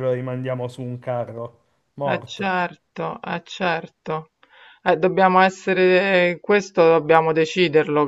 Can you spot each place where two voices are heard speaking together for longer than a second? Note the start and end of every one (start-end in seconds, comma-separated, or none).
none